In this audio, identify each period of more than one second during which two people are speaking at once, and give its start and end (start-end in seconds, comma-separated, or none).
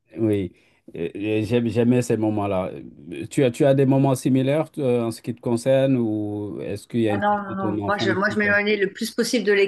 7.1-8.5